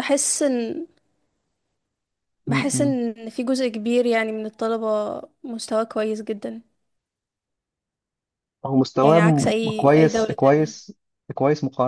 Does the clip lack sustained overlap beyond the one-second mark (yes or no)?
no